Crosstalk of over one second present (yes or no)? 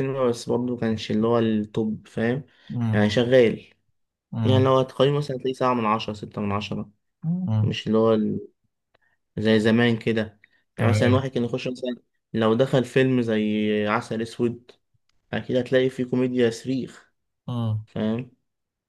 no